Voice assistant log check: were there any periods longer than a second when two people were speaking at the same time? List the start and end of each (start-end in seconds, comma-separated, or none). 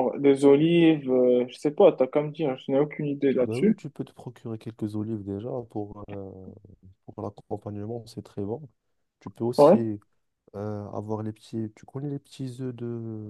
none